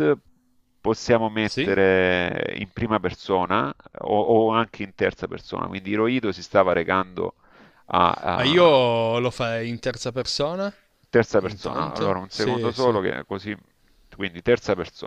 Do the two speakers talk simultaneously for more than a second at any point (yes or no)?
yes